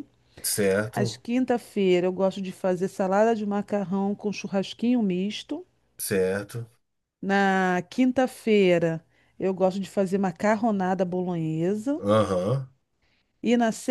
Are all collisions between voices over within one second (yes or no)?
yes